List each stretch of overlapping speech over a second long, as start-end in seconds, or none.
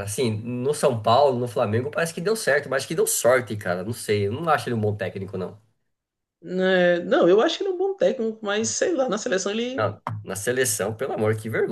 none